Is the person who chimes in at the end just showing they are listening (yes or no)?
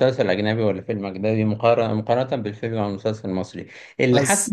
yes